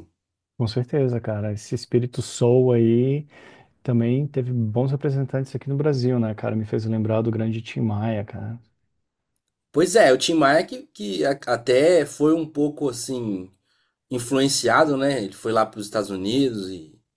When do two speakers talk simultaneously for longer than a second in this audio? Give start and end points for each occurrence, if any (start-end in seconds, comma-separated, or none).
none